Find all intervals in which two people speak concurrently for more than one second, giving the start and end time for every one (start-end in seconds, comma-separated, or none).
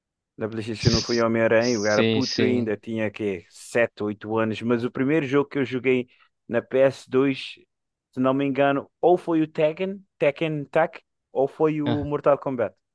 0.8-2.7